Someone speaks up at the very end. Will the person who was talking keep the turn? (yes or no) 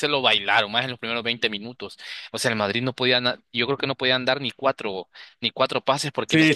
no